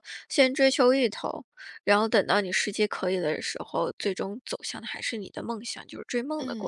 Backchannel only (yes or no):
no